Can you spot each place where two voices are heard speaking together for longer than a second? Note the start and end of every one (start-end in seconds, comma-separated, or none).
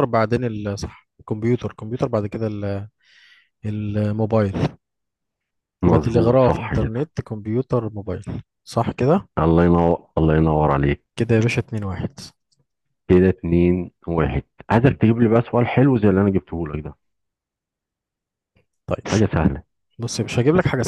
5.9-7.1